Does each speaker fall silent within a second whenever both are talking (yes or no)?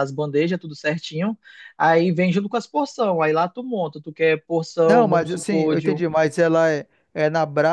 no